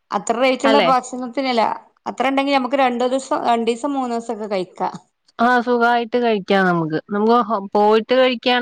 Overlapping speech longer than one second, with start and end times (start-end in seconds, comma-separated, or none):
none